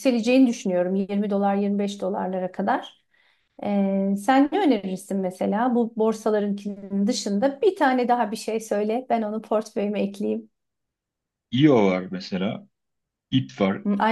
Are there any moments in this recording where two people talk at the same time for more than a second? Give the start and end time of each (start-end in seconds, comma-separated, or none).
none